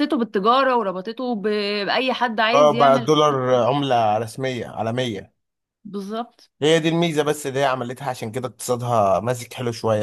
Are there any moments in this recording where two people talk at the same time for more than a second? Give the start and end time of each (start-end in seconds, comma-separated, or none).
none